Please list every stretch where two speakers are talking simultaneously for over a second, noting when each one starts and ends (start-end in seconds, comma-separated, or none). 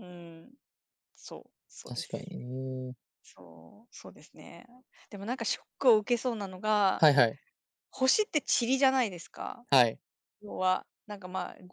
none